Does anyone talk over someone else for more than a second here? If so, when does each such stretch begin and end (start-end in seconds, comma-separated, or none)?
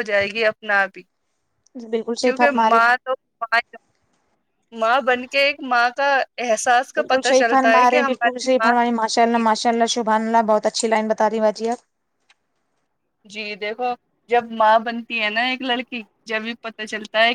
7.0-8.7